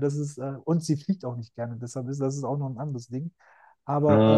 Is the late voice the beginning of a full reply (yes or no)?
no